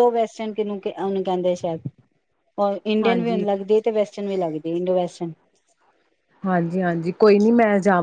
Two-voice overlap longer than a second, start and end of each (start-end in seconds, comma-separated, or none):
none